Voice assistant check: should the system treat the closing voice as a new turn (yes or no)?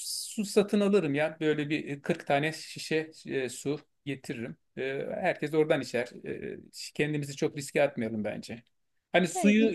no